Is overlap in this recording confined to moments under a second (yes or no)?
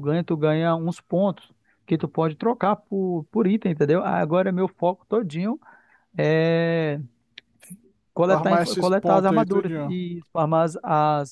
no